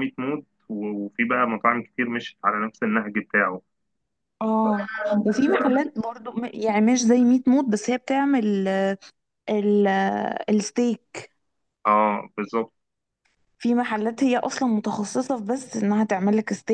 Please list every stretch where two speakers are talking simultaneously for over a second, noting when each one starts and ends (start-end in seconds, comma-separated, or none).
none